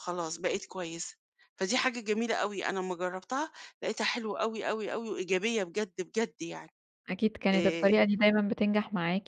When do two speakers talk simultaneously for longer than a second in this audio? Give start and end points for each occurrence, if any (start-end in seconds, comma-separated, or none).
none